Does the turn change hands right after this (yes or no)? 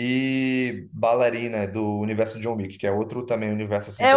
yes